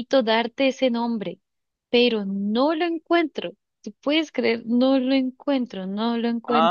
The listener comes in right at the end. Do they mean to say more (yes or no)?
yes